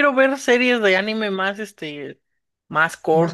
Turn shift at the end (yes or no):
no